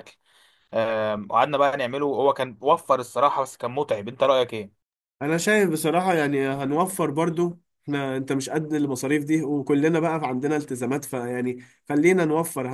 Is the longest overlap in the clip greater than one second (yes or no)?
no